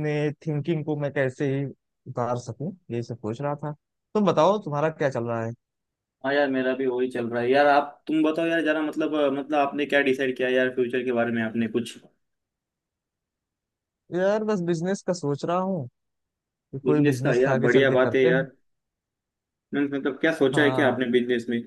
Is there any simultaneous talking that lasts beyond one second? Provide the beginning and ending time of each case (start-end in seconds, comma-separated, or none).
16.8-18.4